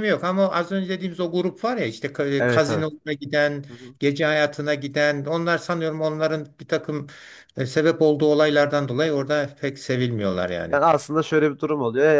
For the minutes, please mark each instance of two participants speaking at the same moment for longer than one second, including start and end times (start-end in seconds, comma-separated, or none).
none